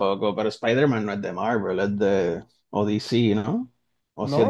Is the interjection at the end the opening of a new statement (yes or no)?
yes